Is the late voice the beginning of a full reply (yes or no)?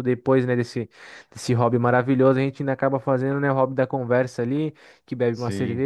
no